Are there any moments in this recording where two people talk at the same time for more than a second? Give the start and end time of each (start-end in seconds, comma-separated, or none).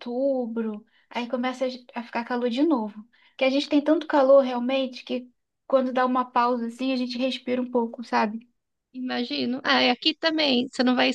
none